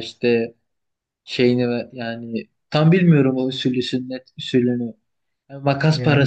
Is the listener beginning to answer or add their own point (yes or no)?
no